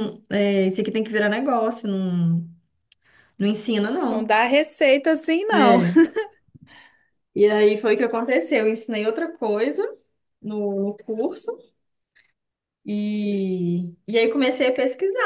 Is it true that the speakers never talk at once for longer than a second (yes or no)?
yes